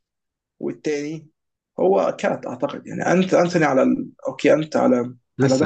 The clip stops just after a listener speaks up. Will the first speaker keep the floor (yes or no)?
yes